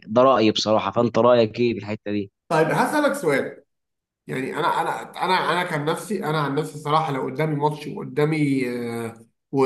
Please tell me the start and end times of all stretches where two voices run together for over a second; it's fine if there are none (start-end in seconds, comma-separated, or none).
none